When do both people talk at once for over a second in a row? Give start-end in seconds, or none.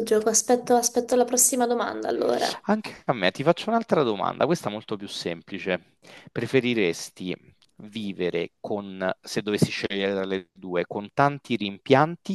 none